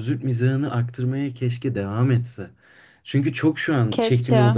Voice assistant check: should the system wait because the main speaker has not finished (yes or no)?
yes